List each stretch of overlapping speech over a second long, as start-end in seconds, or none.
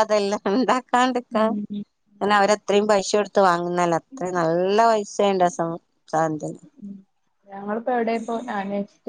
none